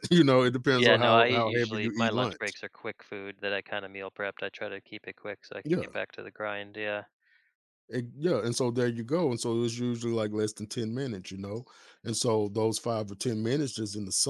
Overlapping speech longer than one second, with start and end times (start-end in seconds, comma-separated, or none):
0.7-2.6